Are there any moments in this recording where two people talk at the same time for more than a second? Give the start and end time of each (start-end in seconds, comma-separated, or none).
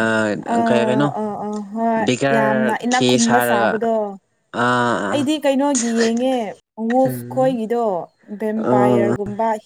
2.0-3.7